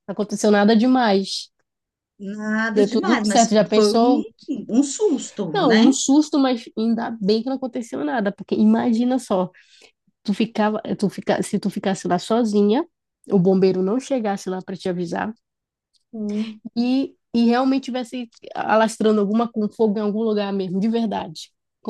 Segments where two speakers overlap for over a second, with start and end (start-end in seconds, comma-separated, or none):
2.7-4.2